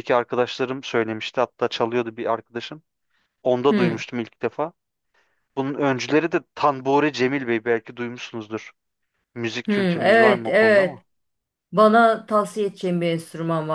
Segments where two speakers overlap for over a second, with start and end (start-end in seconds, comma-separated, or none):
9.7-11.0